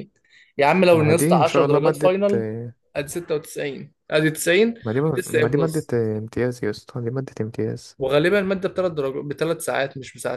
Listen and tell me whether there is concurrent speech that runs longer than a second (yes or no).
yes